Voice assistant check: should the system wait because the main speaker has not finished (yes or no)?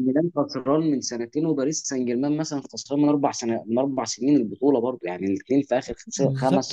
no